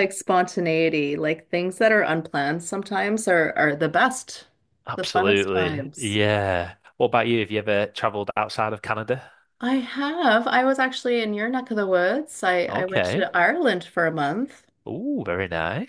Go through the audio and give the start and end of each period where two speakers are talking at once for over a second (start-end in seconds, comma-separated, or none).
5.0-6.2